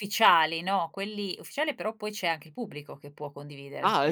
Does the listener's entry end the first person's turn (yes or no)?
yes